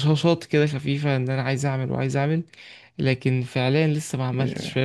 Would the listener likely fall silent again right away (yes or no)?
yes